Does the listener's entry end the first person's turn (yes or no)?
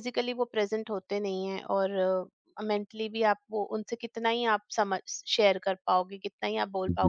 no